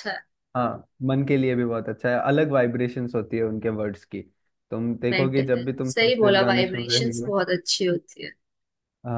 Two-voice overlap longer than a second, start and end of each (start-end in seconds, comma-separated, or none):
5.1-7.3